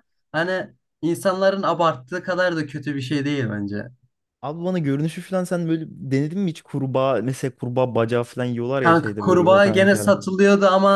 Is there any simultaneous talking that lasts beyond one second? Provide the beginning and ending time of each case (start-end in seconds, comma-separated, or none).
8.8-10.2